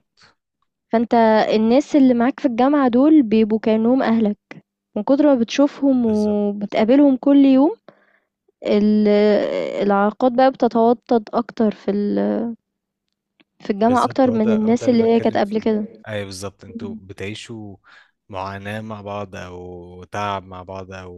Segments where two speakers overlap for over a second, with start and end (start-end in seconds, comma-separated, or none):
13.9-15.7